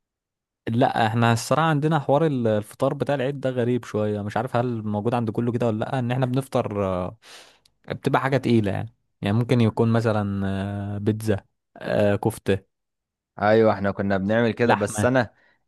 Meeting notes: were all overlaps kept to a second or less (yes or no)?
yes